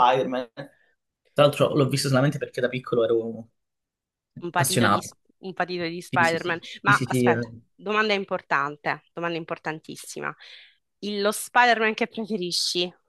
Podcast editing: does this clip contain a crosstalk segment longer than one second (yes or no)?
yes